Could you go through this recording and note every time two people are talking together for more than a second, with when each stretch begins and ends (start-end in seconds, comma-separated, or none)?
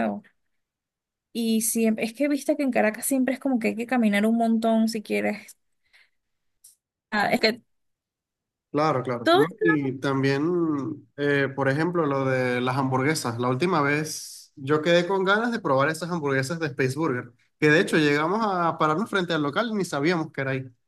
none